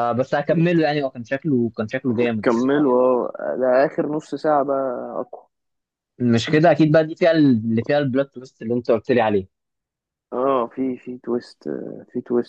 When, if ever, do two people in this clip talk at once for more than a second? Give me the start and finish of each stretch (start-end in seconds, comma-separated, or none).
none